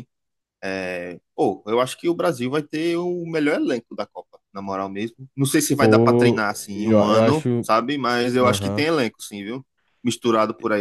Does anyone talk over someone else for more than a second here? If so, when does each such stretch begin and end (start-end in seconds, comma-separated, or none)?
5.8-7.7